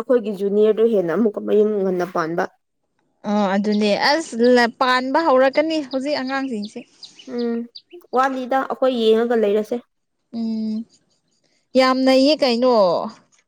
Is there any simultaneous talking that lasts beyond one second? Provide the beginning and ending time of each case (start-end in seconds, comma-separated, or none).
none